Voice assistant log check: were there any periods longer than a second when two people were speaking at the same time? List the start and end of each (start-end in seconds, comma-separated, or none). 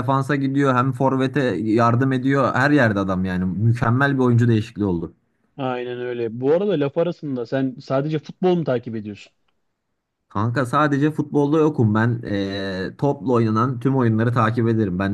none